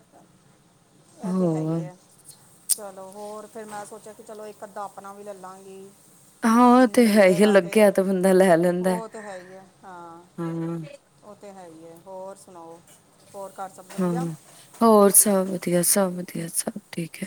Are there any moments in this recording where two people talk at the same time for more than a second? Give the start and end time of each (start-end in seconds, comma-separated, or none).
none